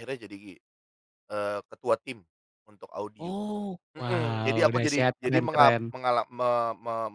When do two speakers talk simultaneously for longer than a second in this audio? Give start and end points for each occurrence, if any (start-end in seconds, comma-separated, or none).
4.0-5.8